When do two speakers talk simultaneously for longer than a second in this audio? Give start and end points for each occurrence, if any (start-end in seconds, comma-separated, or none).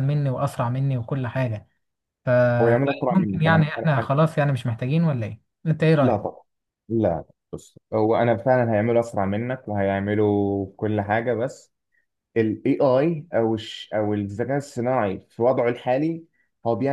2.6-4.1